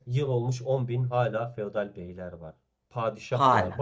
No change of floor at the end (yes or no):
yes